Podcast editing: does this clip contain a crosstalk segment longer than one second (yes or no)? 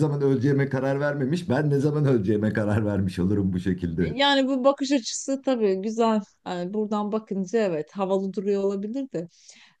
no